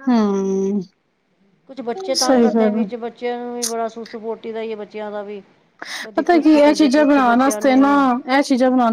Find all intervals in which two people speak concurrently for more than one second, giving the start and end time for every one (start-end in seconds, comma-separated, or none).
6.2-7.9